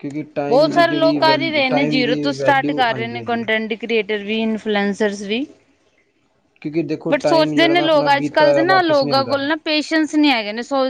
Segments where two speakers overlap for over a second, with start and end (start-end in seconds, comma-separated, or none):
0.5-3.4, 7.1-9.4